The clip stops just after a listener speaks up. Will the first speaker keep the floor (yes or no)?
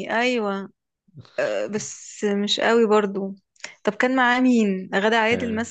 no